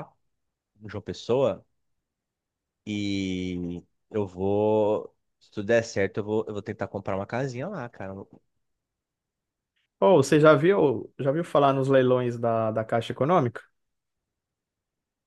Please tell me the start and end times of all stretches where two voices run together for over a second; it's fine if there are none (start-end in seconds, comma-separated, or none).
none